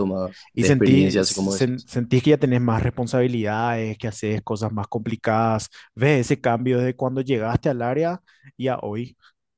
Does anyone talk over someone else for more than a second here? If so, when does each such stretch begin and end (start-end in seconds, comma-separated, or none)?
0.5-1.9